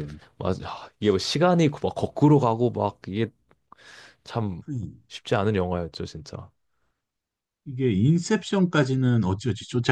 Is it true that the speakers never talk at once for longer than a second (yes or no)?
yes